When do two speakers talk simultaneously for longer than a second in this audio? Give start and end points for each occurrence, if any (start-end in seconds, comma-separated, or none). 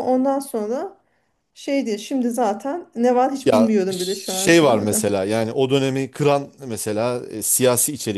3.4-5.0